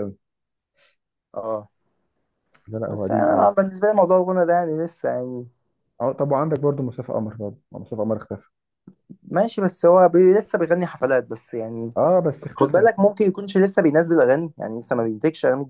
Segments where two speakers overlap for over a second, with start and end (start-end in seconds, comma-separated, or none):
none